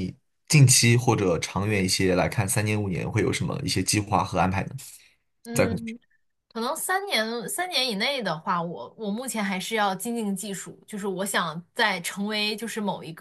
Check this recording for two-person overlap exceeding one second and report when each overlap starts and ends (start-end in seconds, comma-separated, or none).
none